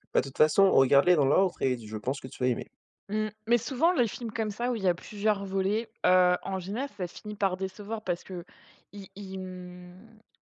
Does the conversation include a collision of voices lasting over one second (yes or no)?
no